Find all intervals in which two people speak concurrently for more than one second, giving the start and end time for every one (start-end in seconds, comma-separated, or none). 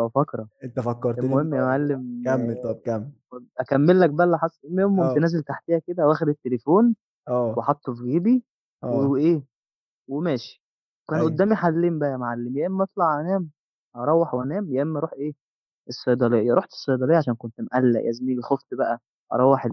1.2-2.8